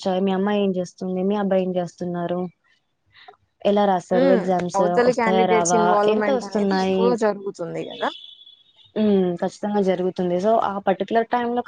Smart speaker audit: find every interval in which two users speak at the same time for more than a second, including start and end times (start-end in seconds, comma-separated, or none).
4.1-7.0